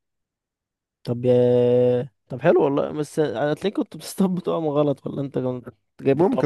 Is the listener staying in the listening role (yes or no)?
no